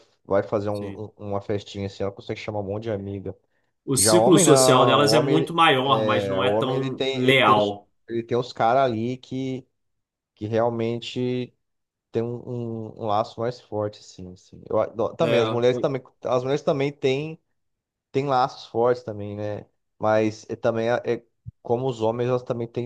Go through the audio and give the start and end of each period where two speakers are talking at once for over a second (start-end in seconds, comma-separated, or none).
4.0-7.9